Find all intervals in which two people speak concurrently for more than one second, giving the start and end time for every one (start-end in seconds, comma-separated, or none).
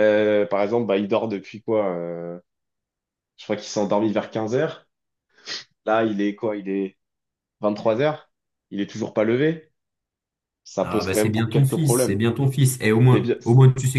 10.8-12.2